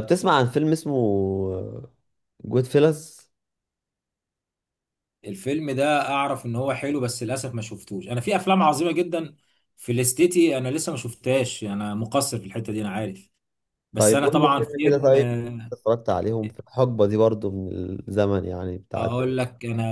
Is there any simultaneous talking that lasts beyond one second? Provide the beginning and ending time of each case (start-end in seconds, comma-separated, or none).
13.9-15.2